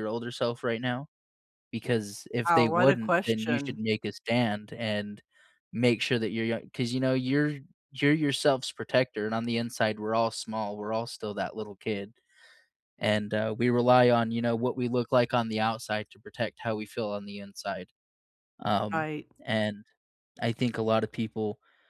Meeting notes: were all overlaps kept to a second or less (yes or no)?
no